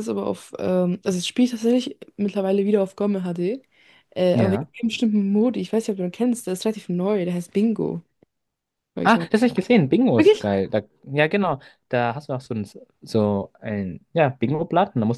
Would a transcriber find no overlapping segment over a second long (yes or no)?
yes